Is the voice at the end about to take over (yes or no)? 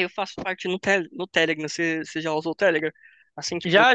no